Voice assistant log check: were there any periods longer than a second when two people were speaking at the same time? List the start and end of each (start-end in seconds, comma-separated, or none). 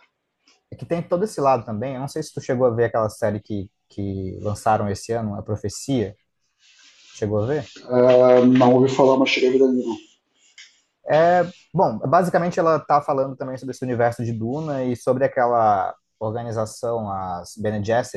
none